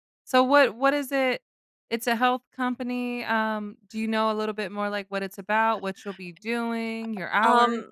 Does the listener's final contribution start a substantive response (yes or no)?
yes